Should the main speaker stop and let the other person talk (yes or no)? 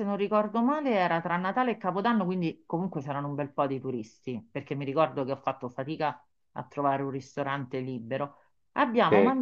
no